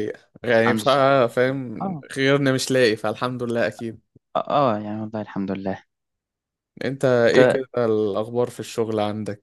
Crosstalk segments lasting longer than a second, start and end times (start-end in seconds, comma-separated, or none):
none